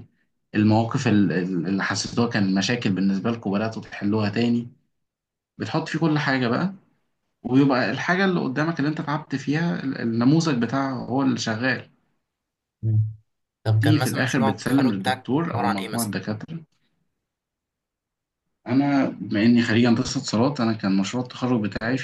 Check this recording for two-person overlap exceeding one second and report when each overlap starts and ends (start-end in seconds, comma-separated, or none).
13.8-16.2